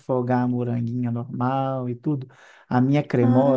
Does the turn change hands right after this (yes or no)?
no